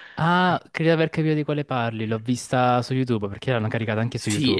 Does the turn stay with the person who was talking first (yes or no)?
no